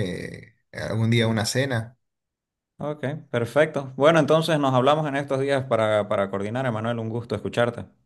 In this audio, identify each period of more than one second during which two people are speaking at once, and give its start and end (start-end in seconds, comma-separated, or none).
none